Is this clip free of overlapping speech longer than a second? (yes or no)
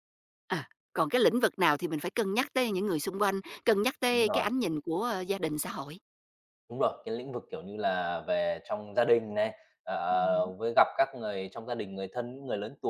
yes